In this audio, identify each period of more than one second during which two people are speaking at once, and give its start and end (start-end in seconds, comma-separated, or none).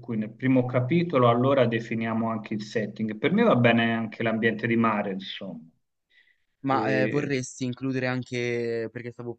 none